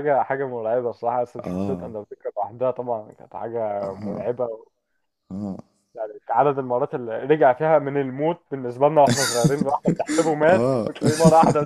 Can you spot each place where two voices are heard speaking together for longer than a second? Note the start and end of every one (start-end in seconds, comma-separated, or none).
none